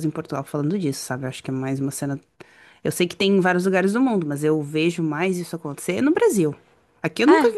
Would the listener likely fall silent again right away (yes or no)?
yes